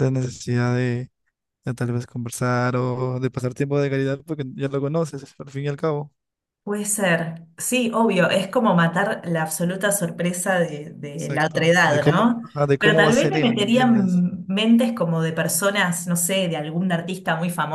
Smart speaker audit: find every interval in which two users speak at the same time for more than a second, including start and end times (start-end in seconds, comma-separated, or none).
11.2-14.2